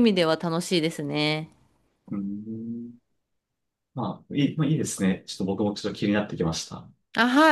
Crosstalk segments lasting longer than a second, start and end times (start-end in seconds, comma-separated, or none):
none